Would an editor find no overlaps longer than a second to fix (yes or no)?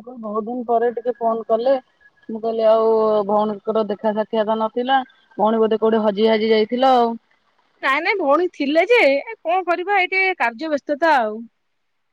yes